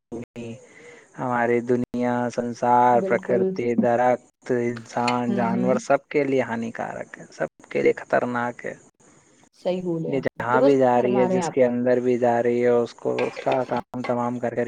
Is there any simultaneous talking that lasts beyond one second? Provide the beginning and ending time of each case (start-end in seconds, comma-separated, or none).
10.1-11.7